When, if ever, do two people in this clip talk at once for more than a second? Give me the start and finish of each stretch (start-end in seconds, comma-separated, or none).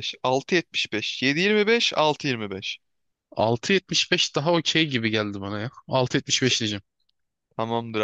none